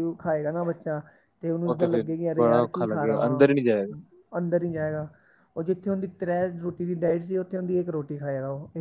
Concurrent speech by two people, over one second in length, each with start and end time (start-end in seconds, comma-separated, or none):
1.7-3.9